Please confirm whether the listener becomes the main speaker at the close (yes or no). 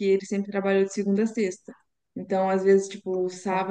no